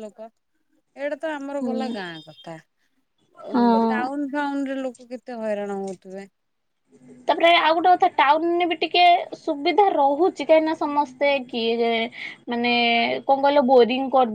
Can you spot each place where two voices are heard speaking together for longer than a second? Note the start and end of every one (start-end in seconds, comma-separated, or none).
none